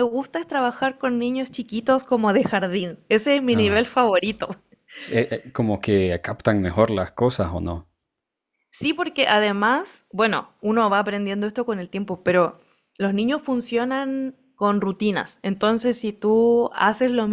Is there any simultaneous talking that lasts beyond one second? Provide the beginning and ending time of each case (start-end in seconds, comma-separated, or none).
none